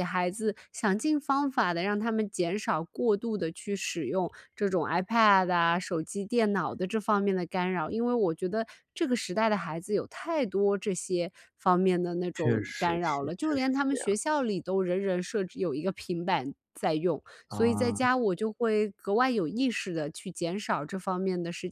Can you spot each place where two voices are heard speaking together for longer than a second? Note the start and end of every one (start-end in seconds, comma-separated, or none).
12.3-14.2